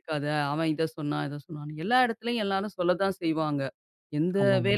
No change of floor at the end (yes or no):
yes